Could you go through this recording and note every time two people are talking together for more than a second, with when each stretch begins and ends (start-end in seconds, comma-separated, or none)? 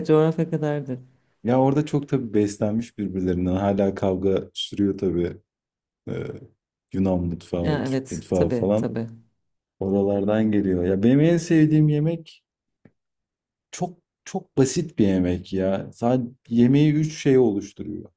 7.6-9.0